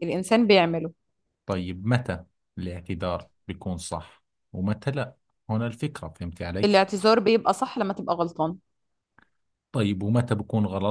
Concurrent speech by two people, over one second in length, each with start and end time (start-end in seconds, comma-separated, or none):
none